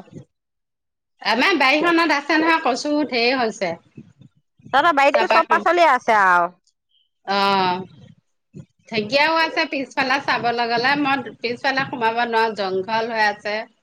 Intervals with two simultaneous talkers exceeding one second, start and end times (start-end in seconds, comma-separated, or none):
none